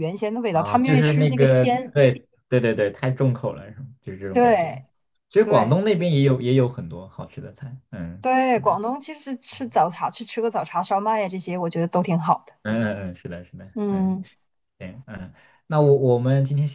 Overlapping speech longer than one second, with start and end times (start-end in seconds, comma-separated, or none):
0.5-1.9